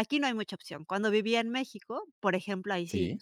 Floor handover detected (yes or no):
no